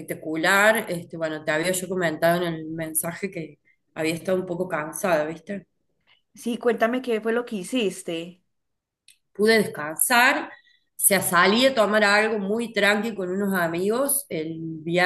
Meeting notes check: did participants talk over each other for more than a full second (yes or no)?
no